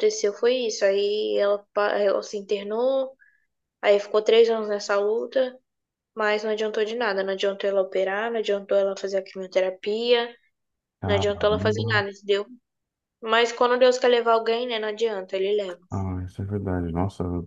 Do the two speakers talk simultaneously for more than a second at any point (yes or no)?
no